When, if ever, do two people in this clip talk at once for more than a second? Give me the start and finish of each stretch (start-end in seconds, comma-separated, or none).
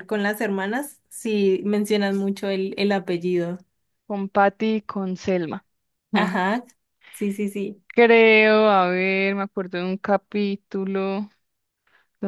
none